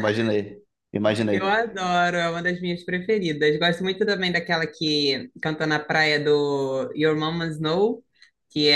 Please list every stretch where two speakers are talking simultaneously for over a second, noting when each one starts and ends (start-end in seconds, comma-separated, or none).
none